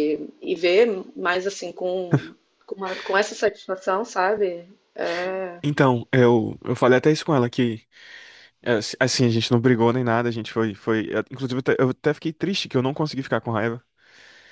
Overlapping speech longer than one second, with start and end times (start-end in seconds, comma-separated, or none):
none